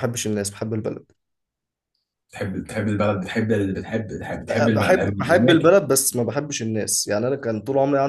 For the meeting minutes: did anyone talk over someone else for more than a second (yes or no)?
yes